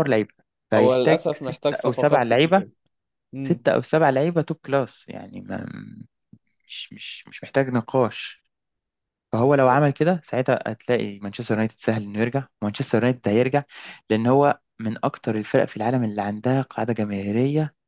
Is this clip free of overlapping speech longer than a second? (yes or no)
no